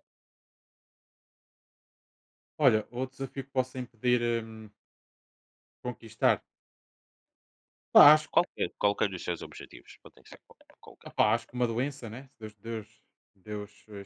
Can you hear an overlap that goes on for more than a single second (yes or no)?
no